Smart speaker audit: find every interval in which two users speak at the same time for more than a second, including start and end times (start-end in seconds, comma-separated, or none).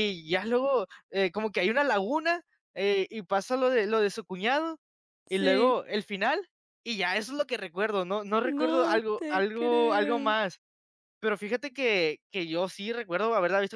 8.4-10.3